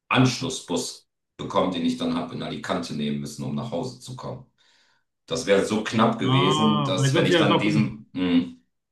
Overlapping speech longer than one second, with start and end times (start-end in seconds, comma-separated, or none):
6.2-7.9